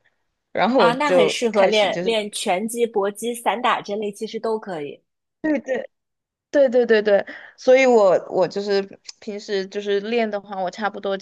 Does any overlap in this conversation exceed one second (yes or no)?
yes